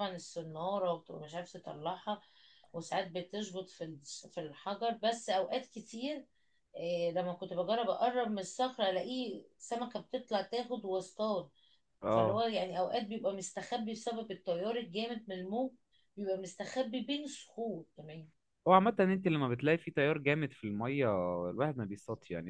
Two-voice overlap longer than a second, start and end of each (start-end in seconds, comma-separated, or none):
none